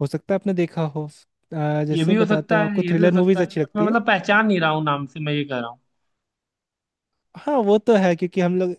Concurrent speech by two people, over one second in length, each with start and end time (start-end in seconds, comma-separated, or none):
1.9-4.0